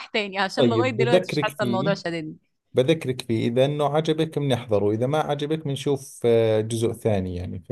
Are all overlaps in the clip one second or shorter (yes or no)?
no